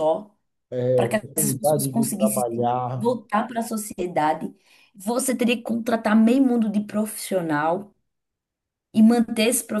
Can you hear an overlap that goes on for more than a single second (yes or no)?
yes